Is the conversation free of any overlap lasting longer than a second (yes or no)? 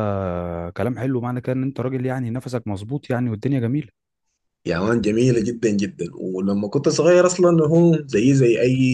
yes